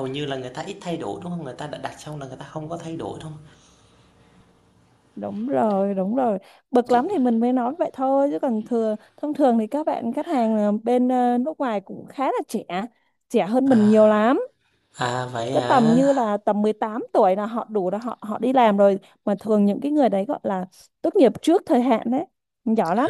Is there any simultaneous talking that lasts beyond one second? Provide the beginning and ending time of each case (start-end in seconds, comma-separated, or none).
none